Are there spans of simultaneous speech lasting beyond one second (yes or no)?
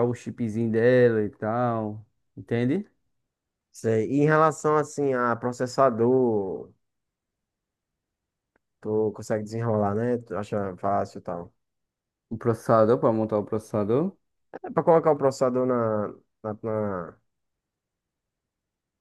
no